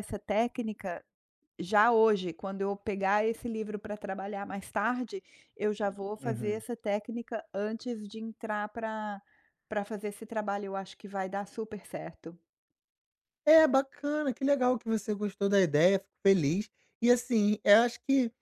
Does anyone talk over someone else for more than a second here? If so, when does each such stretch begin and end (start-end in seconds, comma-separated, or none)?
none